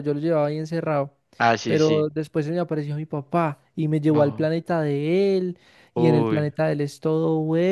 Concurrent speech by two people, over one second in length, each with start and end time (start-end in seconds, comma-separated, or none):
none